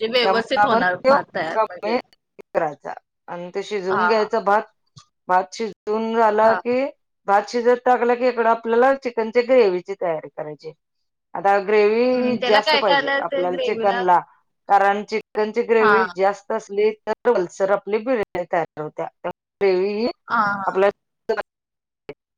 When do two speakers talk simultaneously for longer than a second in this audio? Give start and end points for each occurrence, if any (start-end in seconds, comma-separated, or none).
12.1-14.0